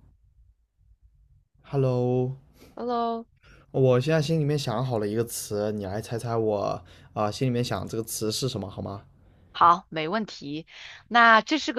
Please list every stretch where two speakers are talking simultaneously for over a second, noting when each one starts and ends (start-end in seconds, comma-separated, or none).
none